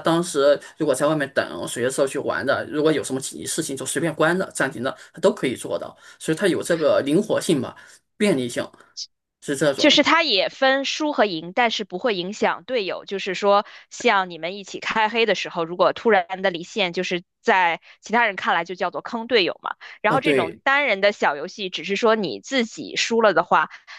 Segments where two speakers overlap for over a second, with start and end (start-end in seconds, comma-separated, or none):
none